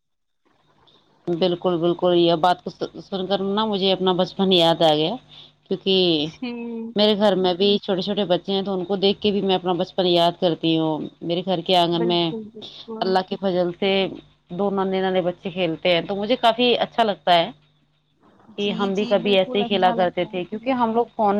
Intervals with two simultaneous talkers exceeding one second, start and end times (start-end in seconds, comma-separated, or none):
18.6-20.7